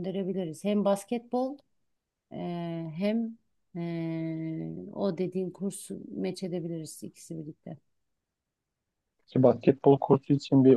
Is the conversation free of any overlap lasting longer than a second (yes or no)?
yes